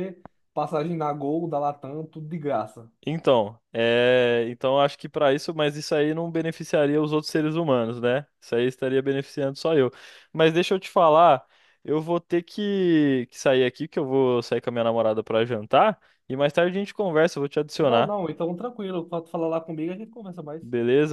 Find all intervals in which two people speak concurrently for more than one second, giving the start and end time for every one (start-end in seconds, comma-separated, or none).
none